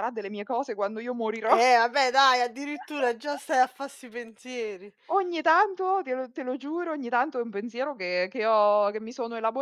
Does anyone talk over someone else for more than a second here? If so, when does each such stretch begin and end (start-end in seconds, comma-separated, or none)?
none